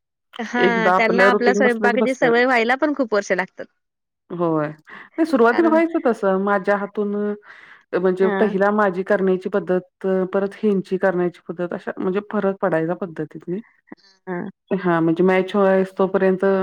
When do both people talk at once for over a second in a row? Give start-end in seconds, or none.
0.7-2.3